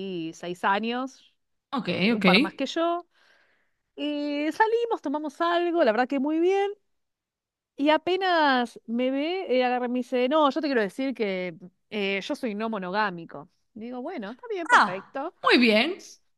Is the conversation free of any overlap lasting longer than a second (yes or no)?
yes